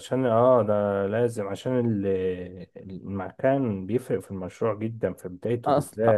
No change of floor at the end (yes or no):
no